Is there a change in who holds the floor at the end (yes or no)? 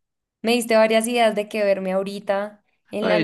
yes